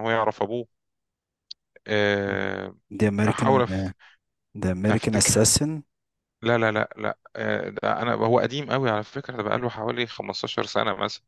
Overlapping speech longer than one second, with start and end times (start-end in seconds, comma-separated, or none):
none